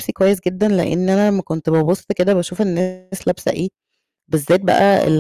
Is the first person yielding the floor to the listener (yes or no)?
no